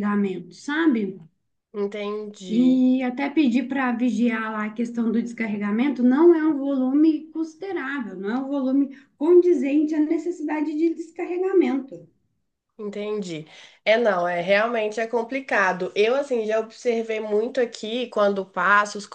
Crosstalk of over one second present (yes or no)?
no